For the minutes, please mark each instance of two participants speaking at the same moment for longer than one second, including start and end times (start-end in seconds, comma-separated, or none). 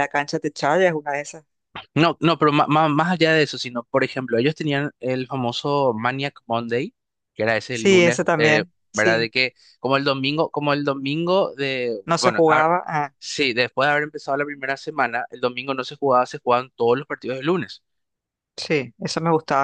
7.7-9.3